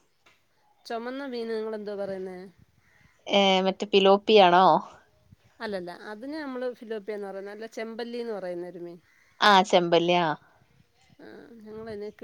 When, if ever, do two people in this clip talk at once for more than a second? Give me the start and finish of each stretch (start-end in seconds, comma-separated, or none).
none